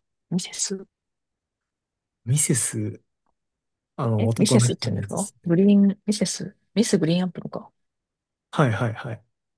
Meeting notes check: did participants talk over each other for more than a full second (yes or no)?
yes